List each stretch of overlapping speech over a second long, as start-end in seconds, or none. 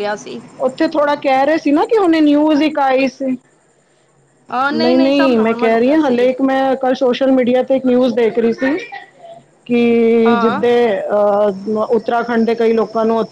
4.8-6.3